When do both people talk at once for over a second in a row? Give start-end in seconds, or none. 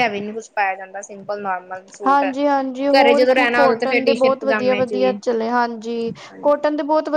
3.6-5.2